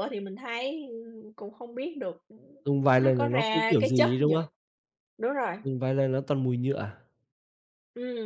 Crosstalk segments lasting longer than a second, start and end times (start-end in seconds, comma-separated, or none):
3.0-4.4